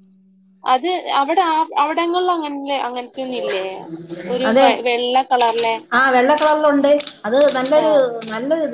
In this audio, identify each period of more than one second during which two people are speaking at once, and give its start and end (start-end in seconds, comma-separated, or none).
none